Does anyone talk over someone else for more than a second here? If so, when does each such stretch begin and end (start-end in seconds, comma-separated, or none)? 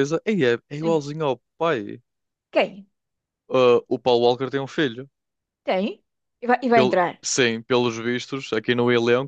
none